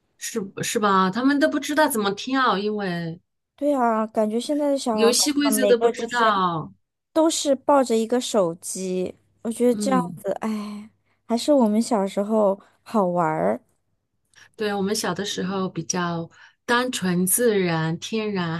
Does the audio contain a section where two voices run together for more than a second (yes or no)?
yes